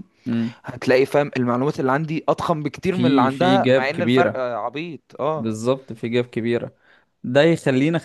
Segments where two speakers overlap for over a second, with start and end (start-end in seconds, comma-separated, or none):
2.8-4.4